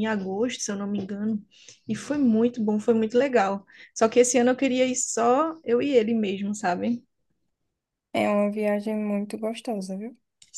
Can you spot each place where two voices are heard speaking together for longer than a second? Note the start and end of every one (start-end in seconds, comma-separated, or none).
none